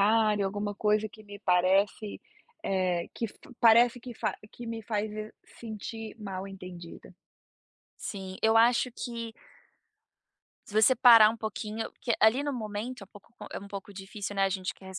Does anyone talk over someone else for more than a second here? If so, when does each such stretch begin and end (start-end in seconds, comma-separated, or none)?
none